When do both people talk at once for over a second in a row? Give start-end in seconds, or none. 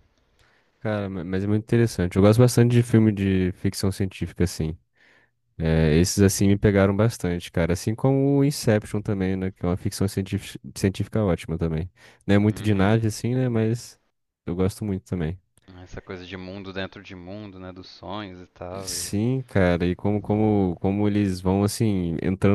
none